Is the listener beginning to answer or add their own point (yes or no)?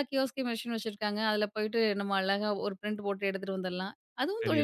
yes